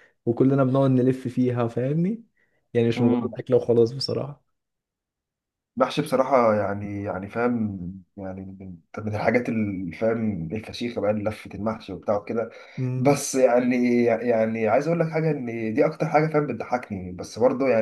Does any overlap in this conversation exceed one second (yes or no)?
no